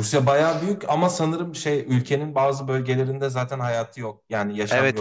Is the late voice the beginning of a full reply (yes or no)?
yes